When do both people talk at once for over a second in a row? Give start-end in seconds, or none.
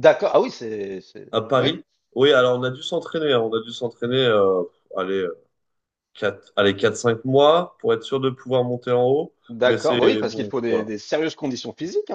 9.5-10.8